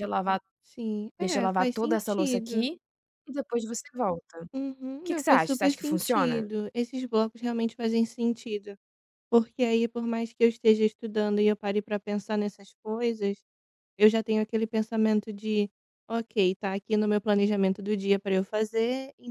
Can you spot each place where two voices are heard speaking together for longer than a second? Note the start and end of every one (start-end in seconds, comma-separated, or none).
1.2-2.7, 5.0-6.5